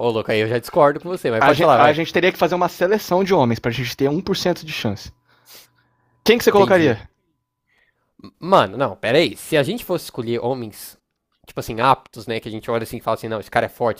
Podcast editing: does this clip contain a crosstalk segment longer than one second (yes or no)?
no